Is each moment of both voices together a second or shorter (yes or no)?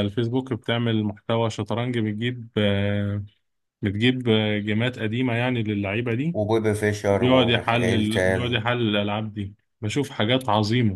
no